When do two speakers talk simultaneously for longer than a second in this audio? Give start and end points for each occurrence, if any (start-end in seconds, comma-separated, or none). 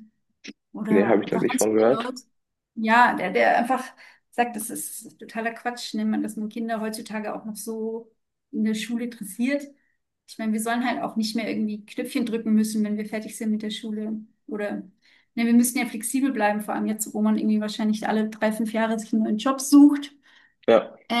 0.9-2.1